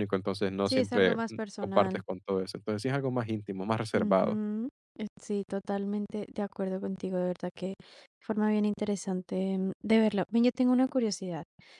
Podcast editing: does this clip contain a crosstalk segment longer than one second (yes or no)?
yes